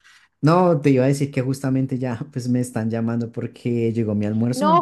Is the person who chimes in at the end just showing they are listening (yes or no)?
no